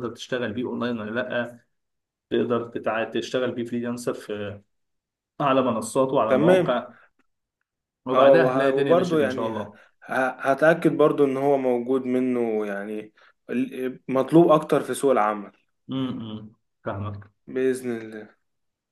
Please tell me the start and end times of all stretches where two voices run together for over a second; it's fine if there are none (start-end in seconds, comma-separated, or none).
8.1-9.8